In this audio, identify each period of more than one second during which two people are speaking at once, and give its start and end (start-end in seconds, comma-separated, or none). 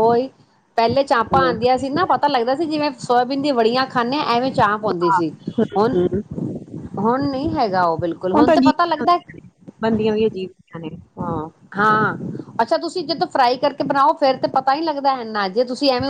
none